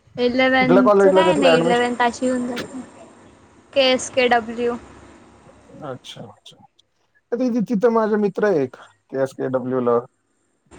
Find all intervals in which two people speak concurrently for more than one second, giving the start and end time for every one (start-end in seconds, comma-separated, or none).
0.6-1.9